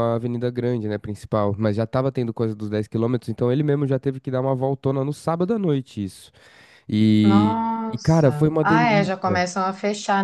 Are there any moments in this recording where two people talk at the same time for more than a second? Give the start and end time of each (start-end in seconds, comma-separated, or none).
7.2-9.4